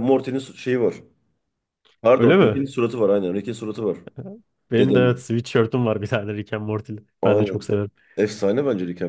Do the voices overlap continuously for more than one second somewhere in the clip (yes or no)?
no